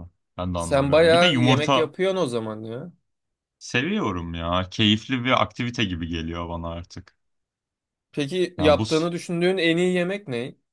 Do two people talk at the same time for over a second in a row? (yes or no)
yes